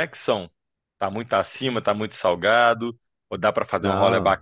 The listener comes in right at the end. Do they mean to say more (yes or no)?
no